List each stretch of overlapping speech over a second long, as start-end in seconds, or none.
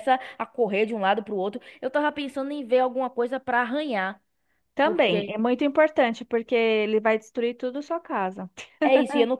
none